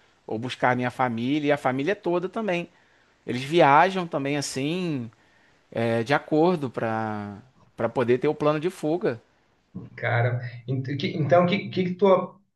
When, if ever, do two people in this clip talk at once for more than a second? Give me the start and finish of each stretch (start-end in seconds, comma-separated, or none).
none